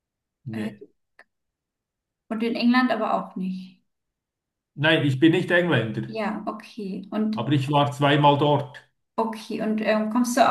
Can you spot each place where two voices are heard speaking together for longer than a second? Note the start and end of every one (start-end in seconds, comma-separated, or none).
none